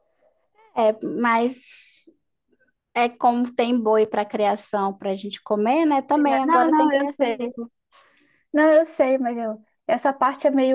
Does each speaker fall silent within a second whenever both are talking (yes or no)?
no